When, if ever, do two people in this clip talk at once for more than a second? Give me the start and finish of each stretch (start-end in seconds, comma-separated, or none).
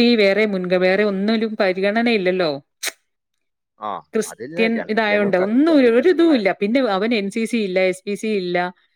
4.3-6.5